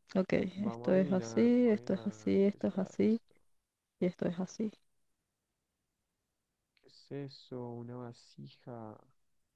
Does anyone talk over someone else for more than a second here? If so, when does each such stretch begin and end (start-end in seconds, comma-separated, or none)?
0.7-3.2